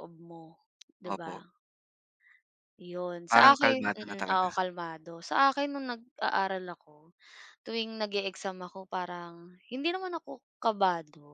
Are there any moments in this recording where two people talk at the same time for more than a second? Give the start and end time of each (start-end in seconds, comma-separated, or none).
3.3-4.5